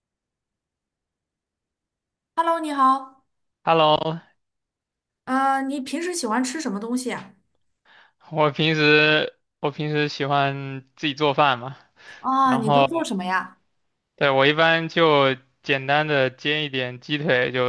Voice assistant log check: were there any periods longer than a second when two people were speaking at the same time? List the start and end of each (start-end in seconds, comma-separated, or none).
none